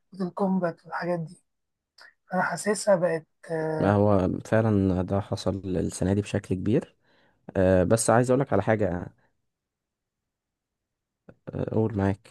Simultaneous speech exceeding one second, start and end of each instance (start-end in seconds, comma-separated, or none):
none